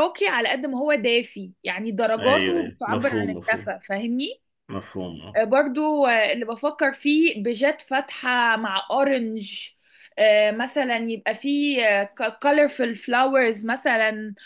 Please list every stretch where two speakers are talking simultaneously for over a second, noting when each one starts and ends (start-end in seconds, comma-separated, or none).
2.2-3.7